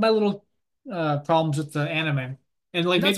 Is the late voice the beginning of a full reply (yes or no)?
no